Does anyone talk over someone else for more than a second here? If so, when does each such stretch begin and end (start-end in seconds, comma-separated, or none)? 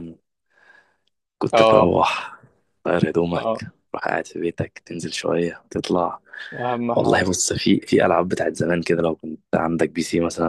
none